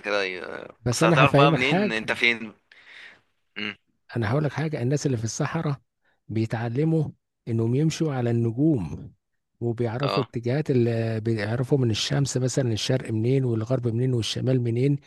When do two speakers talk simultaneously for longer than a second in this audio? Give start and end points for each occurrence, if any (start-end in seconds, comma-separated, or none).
0.8-2.2